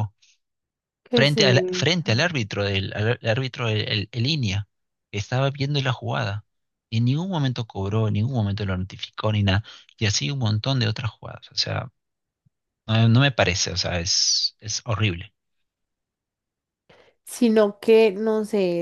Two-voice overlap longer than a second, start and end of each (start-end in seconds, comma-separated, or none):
1.1-2.4